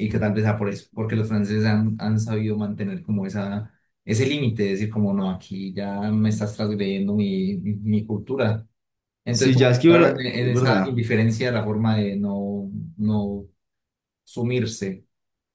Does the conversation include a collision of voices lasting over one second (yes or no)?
yes